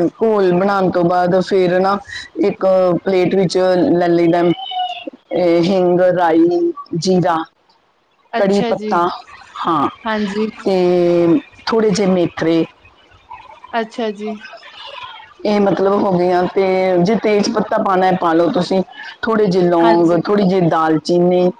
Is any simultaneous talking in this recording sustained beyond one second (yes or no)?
no